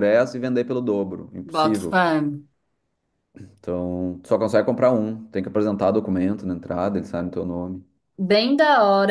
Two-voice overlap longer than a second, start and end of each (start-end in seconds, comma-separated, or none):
none